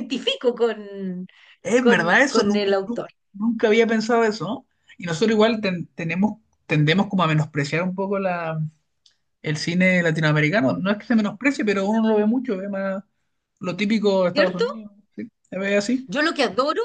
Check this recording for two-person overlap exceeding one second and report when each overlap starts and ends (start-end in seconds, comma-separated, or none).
1.8-3.1